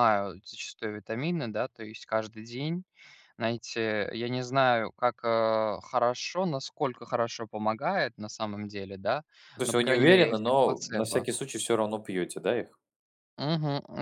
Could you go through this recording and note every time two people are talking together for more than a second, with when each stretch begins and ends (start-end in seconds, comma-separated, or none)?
9.6-11.3